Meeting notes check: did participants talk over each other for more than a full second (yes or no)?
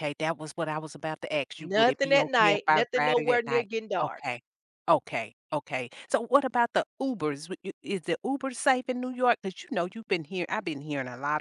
yes